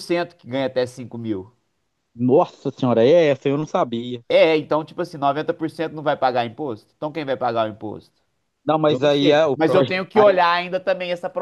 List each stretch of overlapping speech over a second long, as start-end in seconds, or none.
8.9-10.4